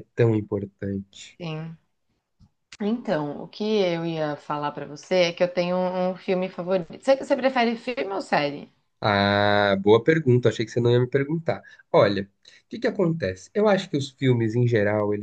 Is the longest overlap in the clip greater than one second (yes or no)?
no